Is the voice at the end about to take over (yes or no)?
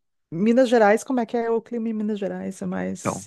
yes